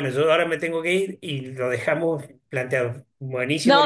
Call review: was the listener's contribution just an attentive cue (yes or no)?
no